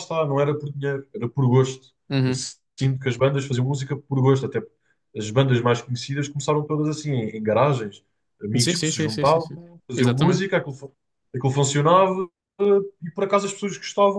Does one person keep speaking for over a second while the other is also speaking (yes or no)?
yes